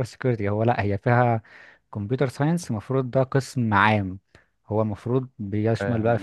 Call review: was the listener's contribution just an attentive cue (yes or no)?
yes